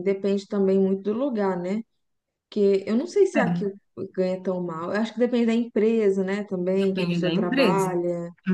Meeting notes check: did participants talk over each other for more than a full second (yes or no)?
yes